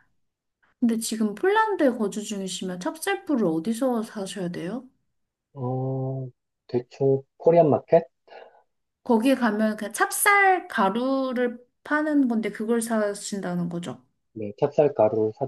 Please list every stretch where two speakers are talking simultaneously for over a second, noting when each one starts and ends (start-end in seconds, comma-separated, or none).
none